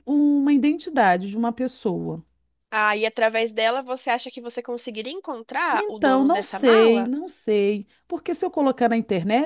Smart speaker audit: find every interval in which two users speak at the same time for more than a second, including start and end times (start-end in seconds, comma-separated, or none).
5.7-7.1